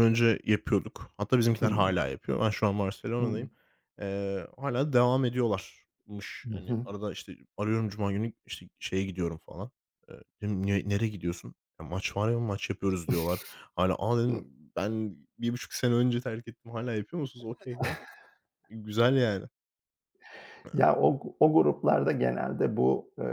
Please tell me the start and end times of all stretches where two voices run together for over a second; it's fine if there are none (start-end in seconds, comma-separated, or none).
none